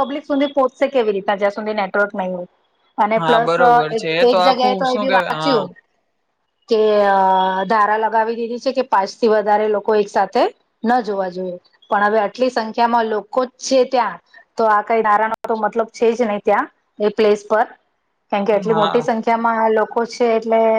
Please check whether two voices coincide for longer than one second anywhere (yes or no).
yes